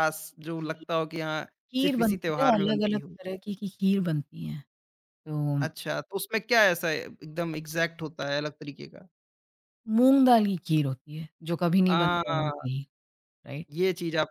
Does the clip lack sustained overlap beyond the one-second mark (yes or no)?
no